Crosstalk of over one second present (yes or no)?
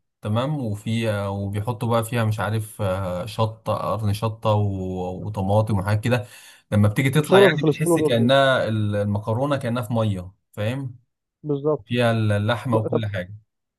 yes